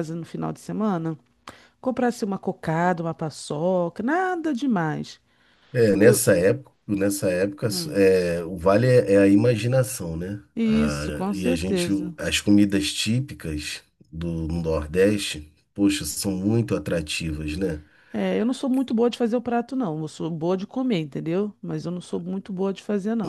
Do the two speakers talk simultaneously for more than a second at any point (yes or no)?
yes